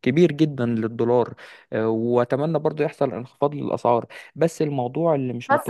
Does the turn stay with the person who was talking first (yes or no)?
no